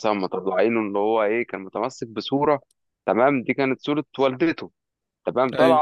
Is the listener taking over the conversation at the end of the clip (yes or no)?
no